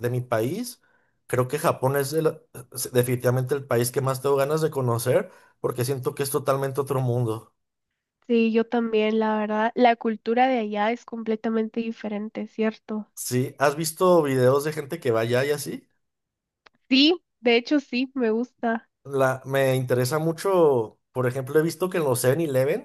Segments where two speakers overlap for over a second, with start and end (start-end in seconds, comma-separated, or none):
none